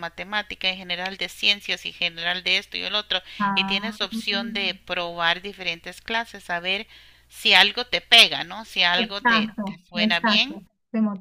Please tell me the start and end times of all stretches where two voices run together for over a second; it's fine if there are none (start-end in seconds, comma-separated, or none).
9.0-10.6